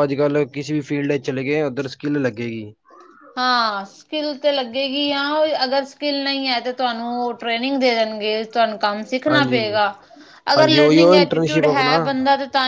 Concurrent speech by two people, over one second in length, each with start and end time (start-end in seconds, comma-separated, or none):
10.6-11.9